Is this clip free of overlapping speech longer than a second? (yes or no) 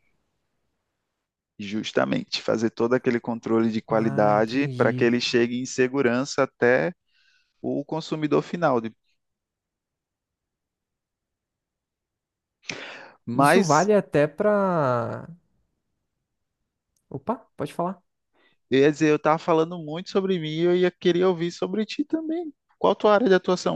no